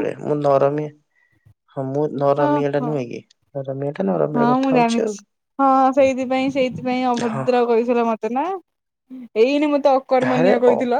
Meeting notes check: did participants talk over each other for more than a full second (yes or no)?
no